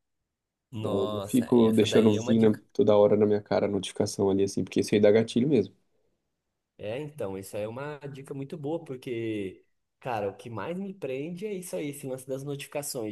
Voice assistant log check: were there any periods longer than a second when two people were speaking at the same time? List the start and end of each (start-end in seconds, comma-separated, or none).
0.8-2.6